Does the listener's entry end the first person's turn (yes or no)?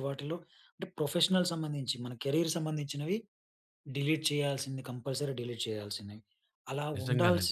no